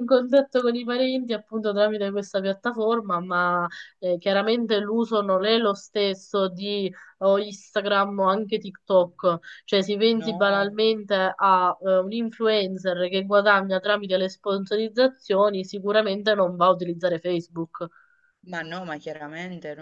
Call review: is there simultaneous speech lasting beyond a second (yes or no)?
no